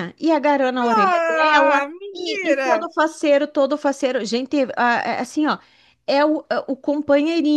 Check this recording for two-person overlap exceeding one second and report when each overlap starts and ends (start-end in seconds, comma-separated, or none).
0.8-2.9